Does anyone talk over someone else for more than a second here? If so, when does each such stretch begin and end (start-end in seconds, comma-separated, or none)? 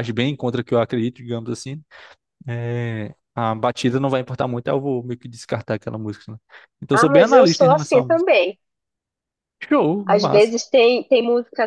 6.9-8.3